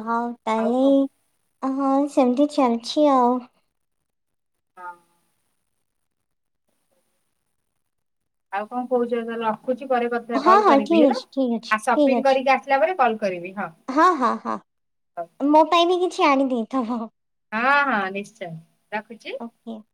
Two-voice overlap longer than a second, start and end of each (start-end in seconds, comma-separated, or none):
10.4-12.3